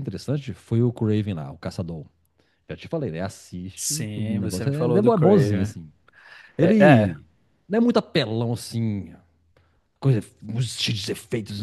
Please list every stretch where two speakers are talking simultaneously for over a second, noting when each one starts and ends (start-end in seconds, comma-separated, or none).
3.8-5.7